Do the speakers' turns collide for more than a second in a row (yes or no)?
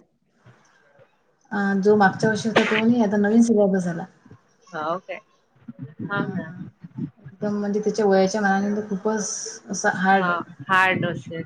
no